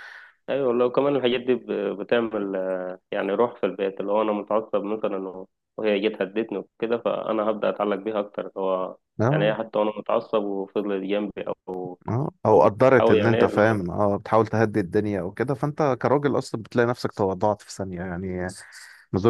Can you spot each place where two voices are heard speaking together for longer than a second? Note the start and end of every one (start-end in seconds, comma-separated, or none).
12.5-13.8